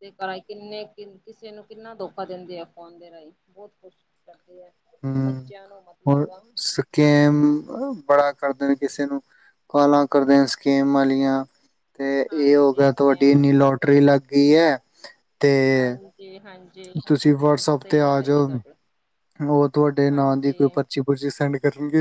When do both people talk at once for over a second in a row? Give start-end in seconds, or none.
12.3-14.0